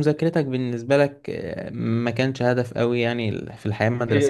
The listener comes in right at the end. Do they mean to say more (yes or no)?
no